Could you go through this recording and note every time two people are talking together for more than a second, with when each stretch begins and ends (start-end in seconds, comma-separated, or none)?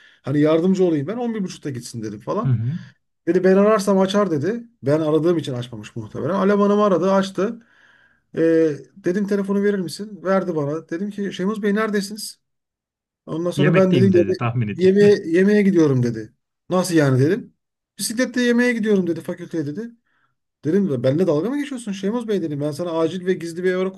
13.6-15.1